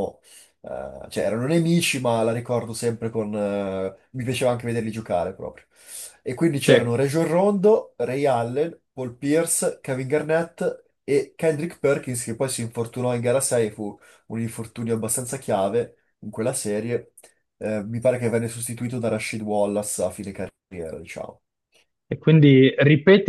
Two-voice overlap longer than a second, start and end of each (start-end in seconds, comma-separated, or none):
none